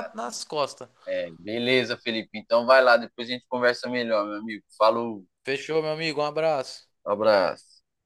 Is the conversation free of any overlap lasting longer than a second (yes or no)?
yes